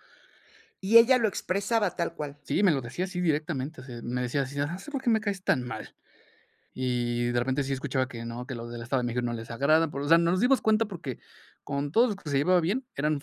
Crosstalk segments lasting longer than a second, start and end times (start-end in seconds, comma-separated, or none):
none